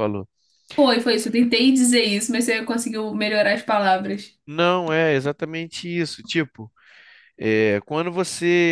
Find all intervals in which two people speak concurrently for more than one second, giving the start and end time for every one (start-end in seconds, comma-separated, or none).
none